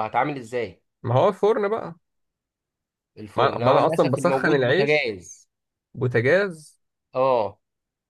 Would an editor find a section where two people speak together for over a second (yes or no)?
yes